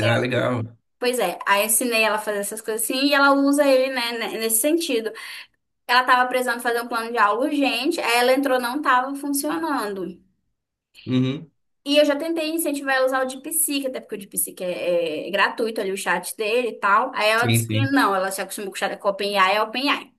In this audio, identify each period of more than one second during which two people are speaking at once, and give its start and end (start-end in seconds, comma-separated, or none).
none